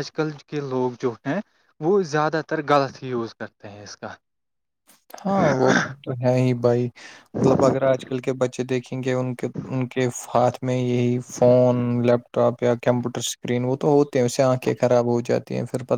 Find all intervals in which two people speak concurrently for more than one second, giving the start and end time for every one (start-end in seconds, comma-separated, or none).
none